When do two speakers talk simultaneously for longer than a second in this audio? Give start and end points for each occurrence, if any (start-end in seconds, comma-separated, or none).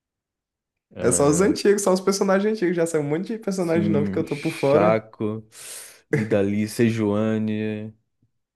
3.6-5.1